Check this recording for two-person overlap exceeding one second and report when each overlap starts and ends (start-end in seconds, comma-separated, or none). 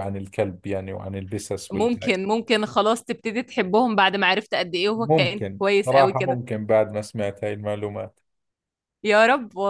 5.0-6.4